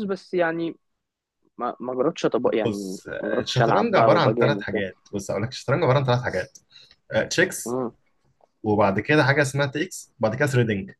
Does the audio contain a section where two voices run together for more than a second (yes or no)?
yes